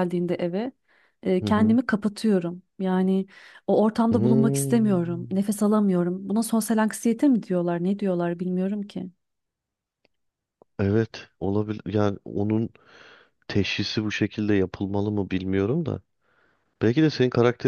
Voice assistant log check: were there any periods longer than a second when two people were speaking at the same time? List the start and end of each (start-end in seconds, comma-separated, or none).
4.1-5.4